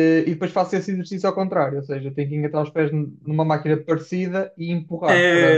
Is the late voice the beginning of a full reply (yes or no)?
yes